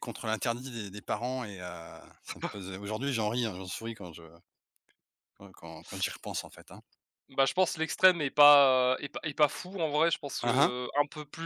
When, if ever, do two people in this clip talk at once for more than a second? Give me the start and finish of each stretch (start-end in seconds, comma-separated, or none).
none